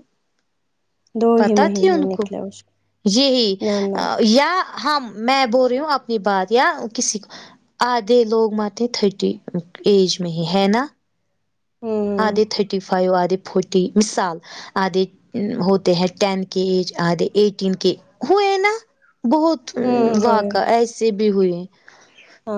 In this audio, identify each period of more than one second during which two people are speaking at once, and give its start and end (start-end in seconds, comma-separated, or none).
none